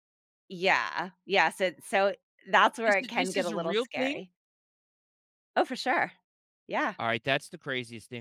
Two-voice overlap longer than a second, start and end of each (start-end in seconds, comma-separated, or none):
2.9-4.2